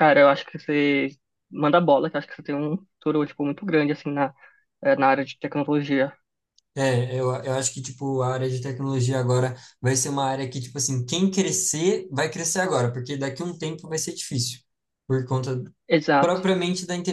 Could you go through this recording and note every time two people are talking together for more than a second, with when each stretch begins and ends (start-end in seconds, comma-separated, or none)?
none